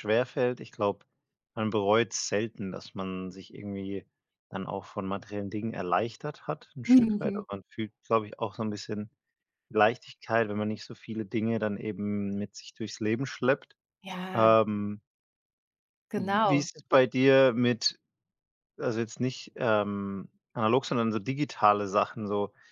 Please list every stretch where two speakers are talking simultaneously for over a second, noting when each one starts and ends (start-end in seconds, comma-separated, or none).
none